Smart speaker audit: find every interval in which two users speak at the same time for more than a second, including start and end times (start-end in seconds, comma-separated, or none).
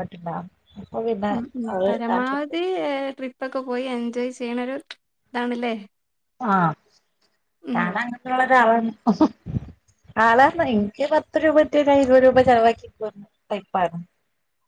none